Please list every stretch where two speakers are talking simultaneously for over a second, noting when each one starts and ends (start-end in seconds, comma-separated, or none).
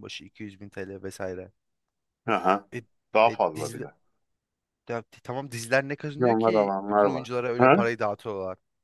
6.2-7.8